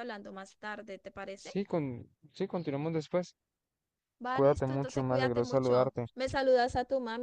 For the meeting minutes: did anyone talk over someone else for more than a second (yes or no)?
yes